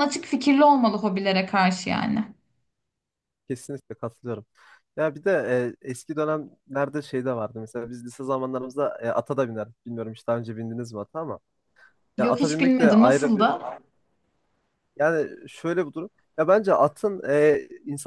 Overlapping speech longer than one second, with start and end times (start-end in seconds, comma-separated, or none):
12.2-13.5